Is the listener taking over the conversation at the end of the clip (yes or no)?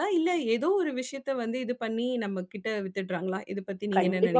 yes